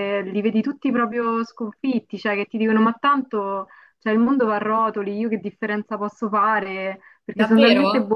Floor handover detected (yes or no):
yes